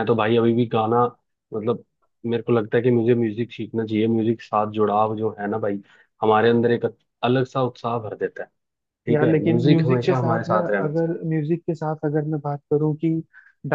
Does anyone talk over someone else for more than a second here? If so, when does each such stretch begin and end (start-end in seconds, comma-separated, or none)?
9.1-11.1